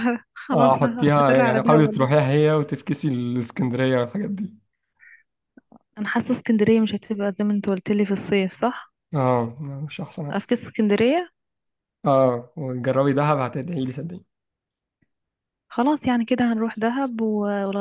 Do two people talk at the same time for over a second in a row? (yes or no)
yes